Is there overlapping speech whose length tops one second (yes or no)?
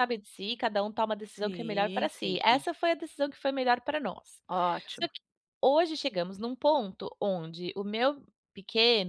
yes